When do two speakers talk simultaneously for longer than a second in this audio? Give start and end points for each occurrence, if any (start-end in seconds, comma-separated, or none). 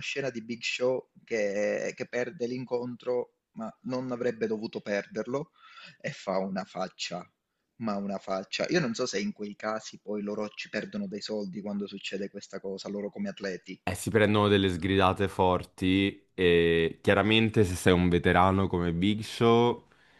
none